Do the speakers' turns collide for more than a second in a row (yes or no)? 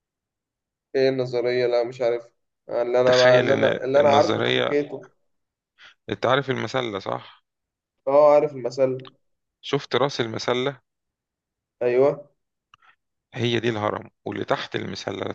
yes